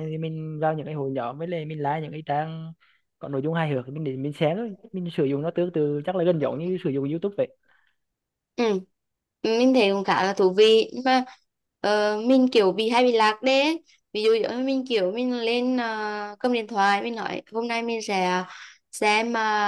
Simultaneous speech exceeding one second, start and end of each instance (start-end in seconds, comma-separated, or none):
none